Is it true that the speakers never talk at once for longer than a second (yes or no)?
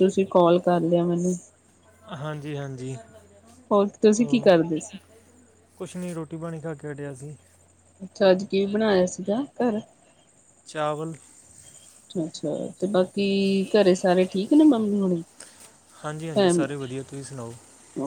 yes